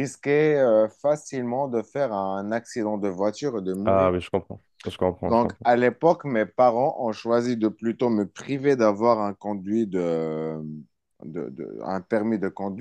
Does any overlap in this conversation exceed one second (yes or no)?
no